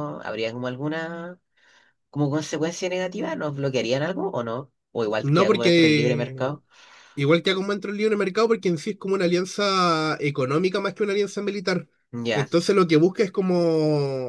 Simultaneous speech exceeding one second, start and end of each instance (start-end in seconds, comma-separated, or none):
5.2-6.5